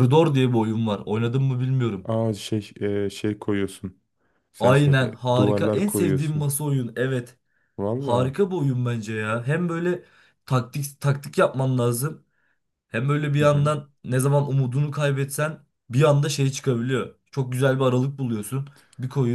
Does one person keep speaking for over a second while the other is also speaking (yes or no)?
yes